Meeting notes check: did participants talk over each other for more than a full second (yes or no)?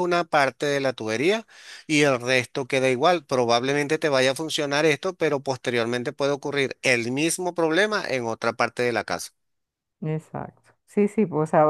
no